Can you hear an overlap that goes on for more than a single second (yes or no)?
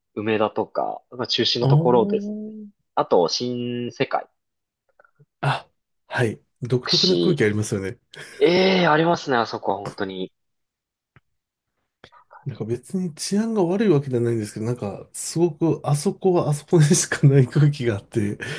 no